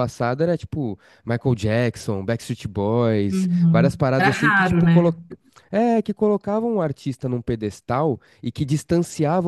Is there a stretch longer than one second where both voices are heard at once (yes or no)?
yes